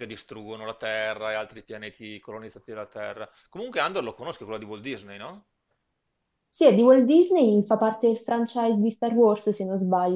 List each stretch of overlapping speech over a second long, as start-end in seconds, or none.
none